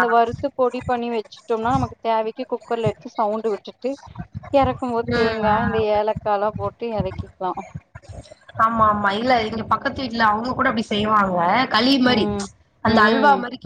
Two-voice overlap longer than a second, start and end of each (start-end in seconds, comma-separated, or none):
none